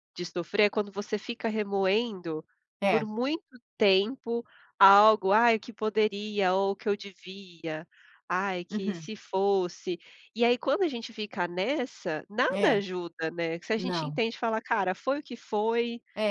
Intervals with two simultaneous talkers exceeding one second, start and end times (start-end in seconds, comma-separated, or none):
none